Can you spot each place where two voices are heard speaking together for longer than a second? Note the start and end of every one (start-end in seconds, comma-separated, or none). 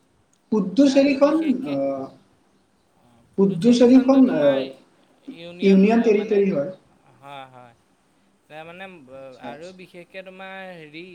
3.4-4.6